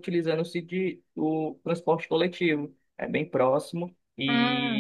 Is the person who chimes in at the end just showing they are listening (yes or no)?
yes